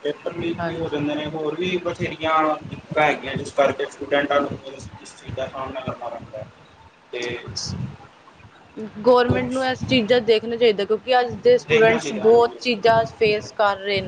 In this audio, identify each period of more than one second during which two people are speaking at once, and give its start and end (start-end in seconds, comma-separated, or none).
11.7-13.4